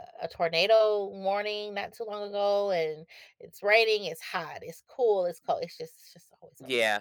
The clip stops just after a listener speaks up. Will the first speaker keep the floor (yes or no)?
no